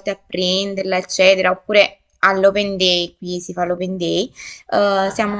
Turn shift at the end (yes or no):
no